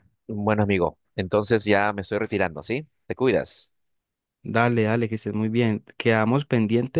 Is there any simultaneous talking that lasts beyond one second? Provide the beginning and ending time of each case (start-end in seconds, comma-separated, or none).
none